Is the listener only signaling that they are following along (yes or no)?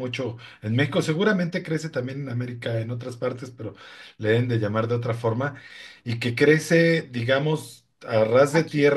yes